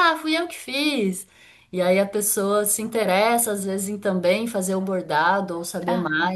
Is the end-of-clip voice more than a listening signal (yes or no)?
no